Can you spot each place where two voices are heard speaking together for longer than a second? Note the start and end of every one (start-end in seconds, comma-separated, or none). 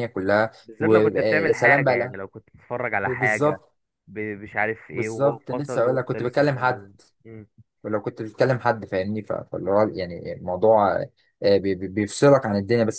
0.6-2.2, 4.9-6.8